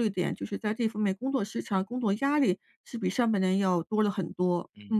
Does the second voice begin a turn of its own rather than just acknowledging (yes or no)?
yes